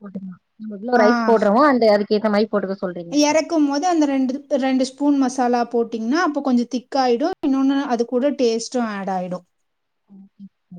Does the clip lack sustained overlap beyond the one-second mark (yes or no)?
yes